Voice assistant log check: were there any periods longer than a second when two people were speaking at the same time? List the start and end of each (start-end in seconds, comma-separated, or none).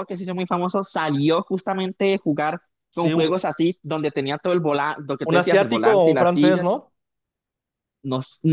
5.2-6.7